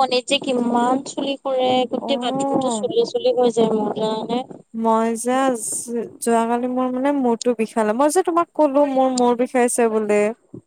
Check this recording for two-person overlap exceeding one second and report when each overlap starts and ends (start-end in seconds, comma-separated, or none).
none